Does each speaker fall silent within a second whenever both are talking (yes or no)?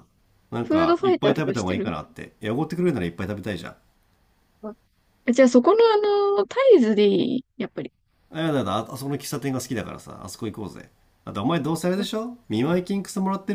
no